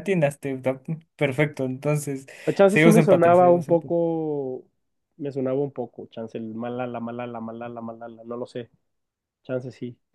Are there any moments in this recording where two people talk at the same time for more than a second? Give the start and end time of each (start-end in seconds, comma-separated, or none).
2.7-3.9